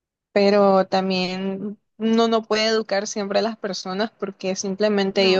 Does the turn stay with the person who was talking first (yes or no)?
yes